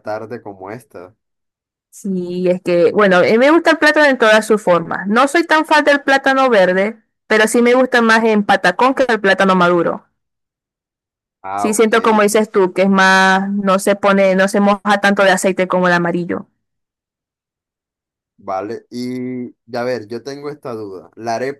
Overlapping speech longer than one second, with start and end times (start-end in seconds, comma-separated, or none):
11.6-12.9